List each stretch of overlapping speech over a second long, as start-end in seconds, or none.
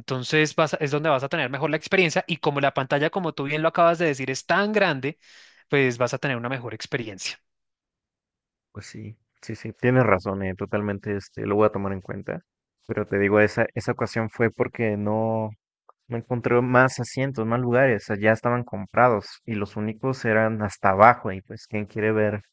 none